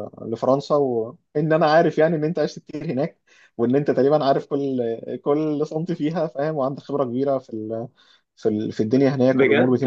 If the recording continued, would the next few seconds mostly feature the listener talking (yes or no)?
yes